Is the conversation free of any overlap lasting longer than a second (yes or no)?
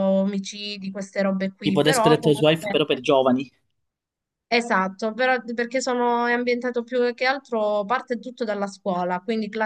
no